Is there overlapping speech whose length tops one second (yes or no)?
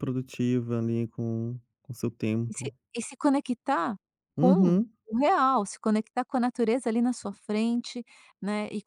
no